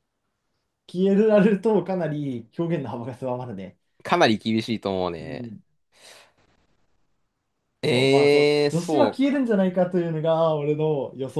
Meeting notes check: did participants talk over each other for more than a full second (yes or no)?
yes